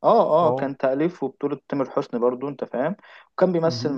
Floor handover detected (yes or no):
no